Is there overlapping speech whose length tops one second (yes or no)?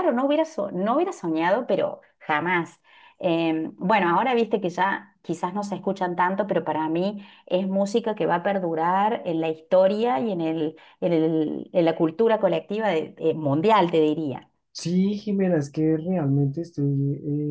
no